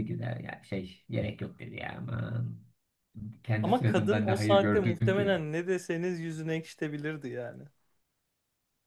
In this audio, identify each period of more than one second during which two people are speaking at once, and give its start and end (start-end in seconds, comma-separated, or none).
3.6-5.4